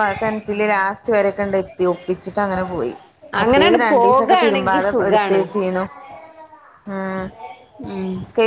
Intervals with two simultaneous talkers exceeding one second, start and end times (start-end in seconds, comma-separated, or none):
3.4-5.4